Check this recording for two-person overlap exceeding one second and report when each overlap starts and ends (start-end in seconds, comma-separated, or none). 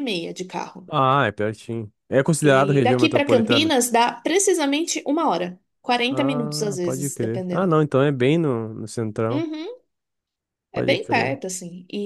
2.4-3.7, 6.1-7.8